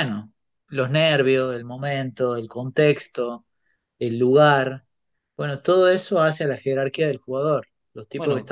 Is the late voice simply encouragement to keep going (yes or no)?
yes